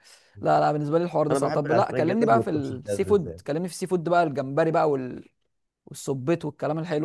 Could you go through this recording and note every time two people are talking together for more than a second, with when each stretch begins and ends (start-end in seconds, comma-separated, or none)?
1.3-3.4